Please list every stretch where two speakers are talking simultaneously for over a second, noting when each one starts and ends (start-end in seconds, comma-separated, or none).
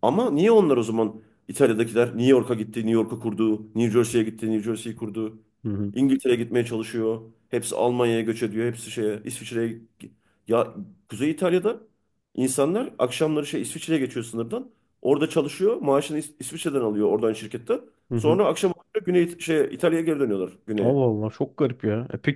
none